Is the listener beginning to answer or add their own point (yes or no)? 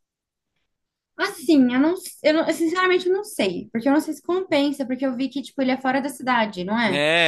yes